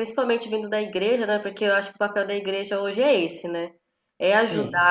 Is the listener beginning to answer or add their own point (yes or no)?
no